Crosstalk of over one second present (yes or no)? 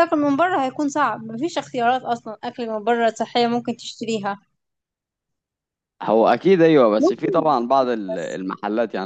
yes